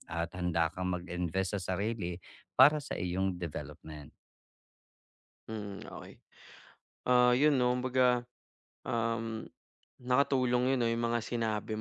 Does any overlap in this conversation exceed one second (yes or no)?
no